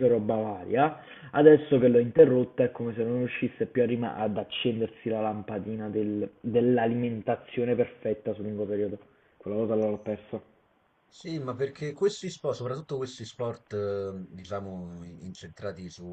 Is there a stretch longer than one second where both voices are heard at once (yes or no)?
no